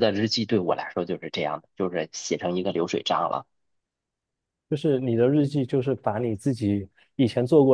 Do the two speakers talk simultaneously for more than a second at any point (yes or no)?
no